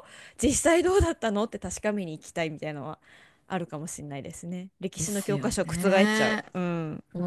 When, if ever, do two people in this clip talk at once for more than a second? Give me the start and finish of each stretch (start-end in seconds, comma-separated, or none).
5.0-6.4